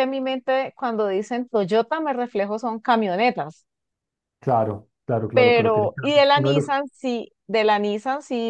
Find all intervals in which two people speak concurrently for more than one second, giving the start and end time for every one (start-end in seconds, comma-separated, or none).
5.3-6.7